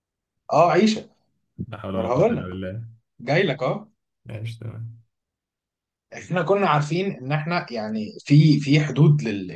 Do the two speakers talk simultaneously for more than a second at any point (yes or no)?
no